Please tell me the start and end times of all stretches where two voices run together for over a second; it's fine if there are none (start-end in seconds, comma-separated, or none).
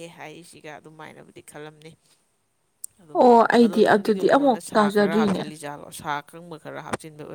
3.6-5.4